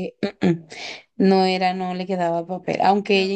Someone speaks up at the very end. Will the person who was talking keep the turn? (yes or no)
yes